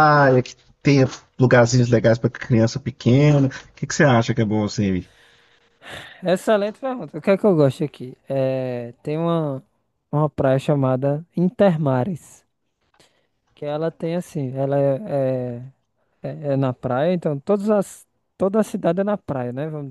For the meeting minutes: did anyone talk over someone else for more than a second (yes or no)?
no